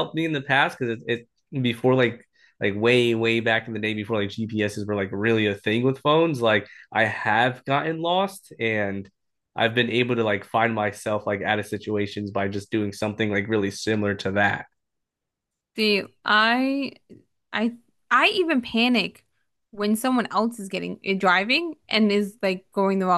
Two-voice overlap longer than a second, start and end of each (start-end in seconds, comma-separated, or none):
none